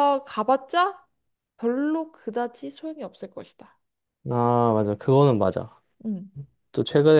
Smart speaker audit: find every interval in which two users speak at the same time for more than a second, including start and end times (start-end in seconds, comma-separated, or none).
none